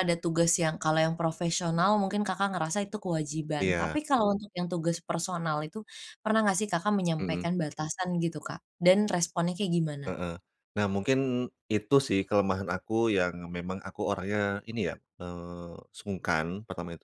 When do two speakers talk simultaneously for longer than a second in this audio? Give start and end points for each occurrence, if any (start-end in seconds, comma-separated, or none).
none